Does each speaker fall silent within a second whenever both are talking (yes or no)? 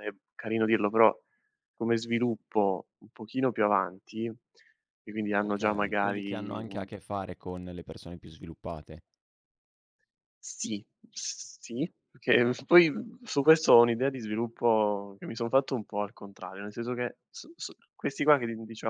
no